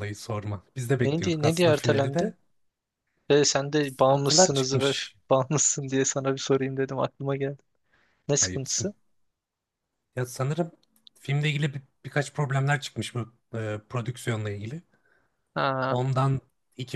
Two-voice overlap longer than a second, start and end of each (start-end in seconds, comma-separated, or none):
1.1-2.3, 3.8-5.2